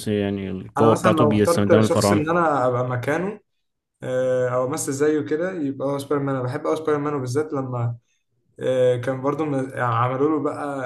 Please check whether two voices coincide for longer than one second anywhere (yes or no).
yes